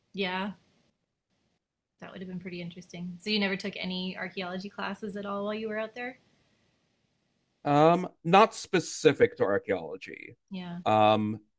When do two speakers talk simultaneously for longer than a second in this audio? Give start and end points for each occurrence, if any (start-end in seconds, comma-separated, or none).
none